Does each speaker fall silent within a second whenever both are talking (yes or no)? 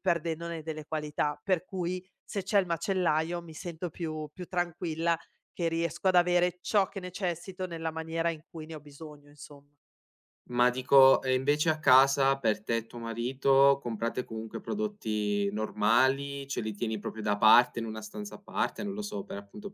yes